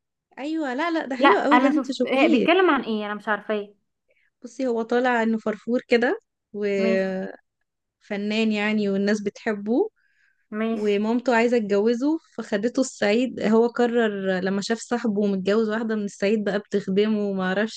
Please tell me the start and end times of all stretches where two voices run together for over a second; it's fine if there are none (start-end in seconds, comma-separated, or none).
1.2-2.5